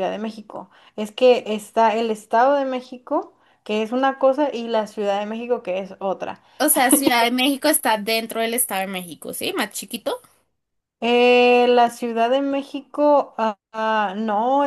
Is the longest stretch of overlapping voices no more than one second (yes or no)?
yes